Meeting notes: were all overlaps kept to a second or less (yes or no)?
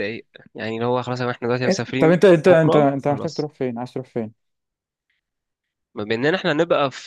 no